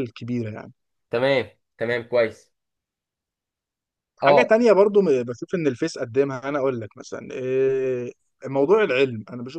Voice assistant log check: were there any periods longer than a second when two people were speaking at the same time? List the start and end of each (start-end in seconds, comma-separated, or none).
none